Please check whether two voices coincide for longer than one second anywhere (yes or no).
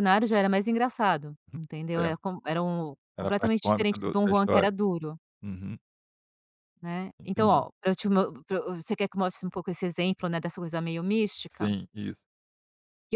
yes